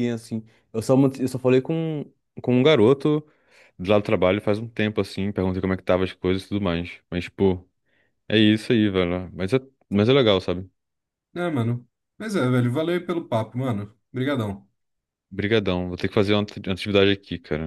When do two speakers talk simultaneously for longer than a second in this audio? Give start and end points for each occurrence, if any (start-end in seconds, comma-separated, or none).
none